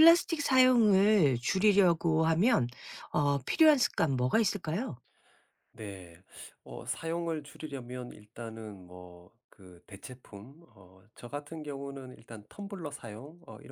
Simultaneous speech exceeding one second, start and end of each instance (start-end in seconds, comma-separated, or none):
none